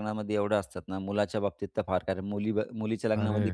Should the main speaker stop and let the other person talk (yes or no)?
no